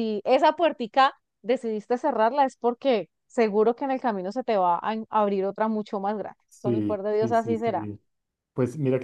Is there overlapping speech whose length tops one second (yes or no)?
yes